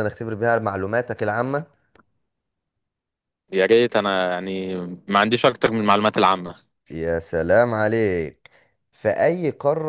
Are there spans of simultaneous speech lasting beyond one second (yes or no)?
no